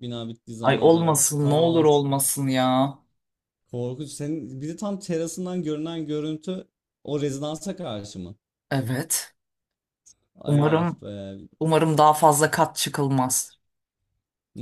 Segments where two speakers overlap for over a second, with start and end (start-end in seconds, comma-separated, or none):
0.6-1.8